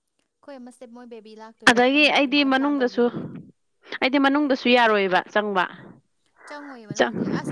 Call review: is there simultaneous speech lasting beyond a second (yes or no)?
yes